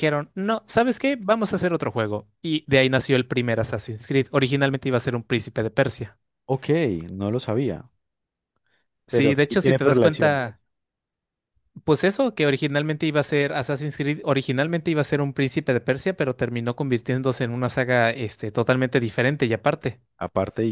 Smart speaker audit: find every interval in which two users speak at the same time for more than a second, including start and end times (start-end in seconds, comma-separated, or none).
9.1-10.4